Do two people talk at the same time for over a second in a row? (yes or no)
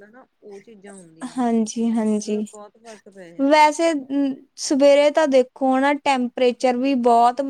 no